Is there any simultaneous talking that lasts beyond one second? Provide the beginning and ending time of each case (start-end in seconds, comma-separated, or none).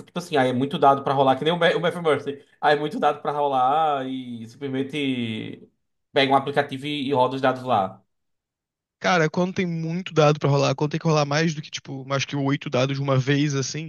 none